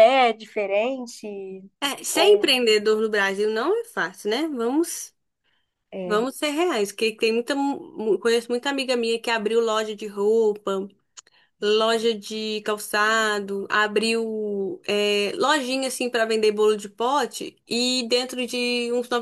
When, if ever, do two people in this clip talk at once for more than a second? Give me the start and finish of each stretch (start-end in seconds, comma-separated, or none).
none